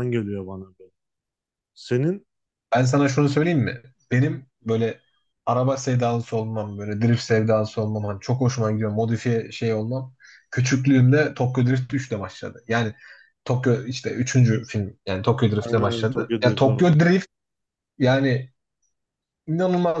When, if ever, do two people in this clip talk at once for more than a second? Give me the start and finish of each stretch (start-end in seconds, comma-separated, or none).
15.6-16.9